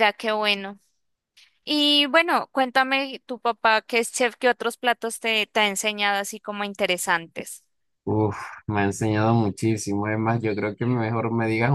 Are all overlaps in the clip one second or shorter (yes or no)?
yes